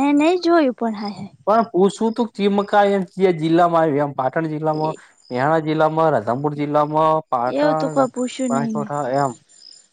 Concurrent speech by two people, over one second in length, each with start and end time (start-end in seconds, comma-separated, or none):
7.6-8.8